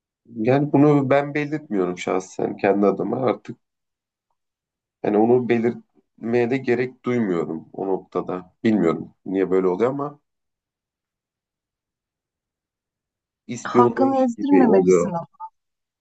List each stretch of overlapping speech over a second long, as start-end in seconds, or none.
13.7-15.1